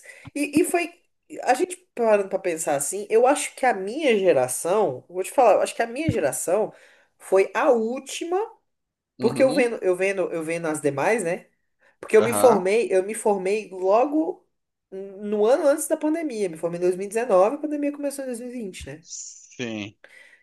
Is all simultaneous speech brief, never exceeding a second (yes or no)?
yes